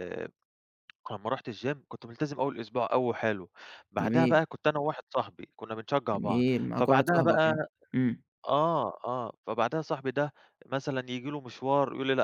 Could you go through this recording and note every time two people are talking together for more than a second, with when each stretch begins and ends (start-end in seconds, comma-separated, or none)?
6.1-7.7